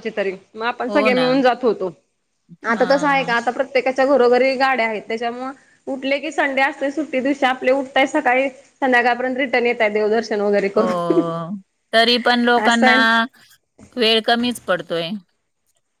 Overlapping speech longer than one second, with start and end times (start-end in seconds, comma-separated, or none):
none